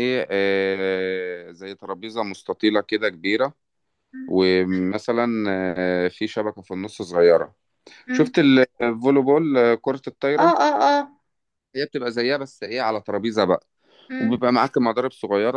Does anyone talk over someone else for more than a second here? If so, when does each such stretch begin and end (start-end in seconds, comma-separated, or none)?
none